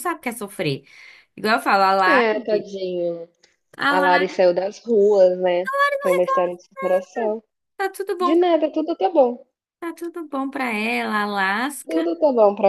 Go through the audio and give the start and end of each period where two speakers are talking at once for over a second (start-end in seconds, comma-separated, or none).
none